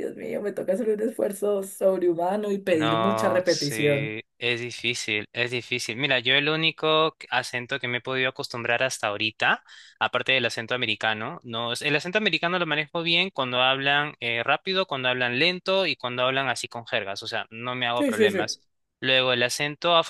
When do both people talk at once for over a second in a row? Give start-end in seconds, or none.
2.7-4.2